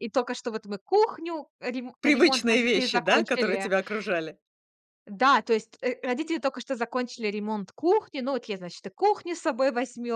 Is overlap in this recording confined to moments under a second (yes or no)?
no